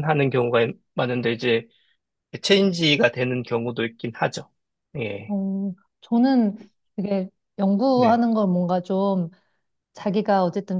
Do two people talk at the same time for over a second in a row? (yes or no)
no